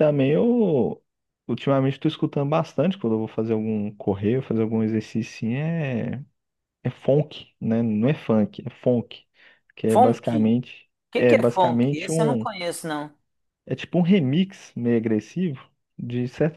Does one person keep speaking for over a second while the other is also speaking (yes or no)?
yes